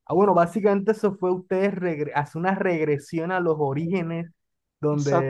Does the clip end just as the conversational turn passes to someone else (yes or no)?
no